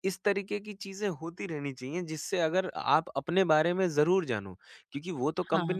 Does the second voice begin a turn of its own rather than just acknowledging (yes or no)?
no